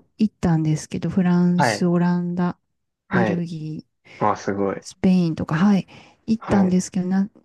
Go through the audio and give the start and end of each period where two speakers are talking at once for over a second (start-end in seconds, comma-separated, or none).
none